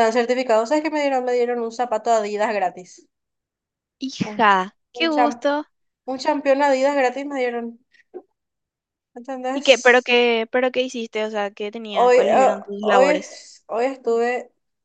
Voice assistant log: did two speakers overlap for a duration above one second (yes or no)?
yes